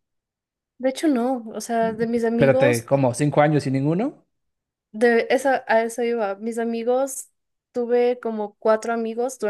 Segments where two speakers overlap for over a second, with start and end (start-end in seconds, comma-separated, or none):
none